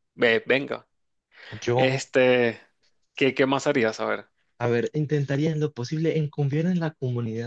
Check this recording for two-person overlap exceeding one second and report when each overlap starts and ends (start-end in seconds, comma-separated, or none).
none